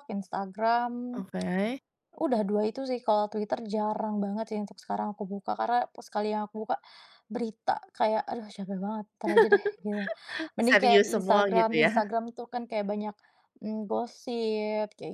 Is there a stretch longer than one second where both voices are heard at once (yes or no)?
yes